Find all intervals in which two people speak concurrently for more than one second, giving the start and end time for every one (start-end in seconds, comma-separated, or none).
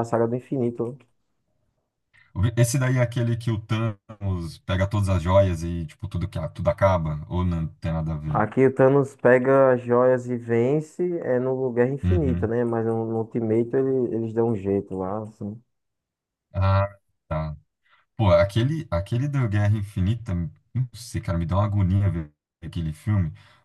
none